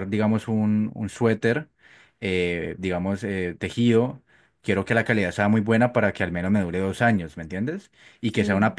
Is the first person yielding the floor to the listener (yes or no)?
no